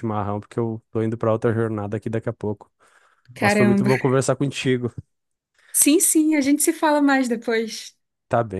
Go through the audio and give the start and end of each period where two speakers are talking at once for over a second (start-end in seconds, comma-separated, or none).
none